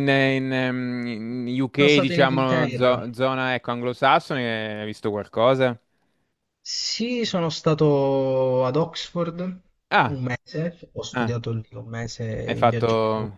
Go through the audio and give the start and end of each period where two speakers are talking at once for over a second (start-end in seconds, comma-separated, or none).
1.8-3.0